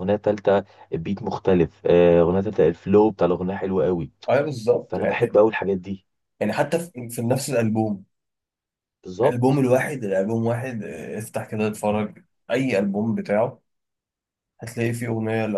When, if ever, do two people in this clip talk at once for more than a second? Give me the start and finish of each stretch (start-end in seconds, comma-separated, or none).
none